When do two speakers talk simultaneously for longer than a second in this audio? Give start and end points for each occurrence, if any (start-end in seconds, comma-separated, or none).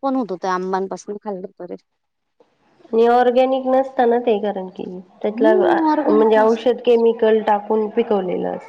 5.4-6.8